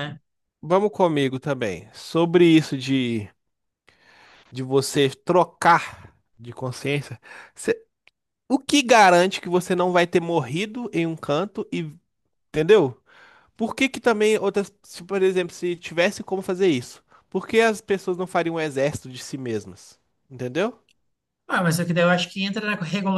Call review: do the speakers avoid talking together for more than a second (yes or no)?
yes